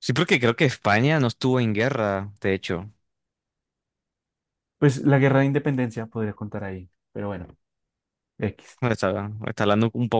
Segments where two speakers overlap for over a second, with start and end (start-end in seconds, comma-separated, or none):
none